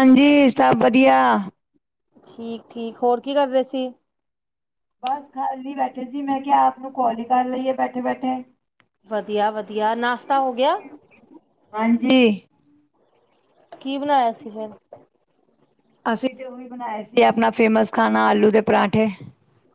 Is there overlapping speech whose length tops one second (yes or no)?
no